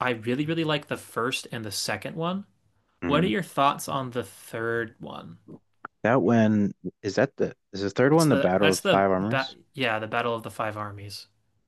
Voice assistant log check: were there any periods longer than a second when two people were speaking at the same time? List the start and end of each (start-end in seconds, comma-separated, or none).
8.1-9.6